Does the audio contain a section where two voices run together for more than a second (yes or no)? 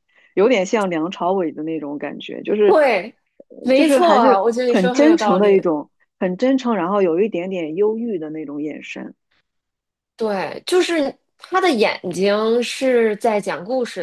yes